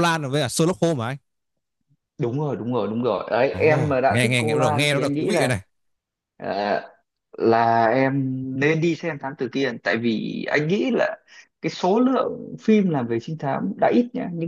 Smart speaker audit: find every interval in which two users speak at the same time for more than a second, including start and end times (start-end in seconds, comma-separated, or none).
3.5-5.5